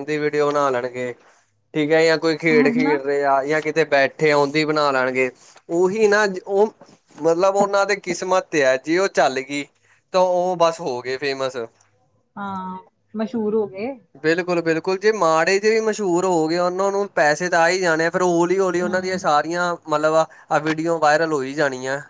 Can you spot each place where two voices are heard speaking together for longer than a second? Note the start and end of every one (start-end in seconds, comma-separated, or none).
none